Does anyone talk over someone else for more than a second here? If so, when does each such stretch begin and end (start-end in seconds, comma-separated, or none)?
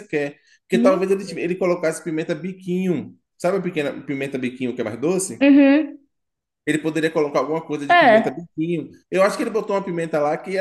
none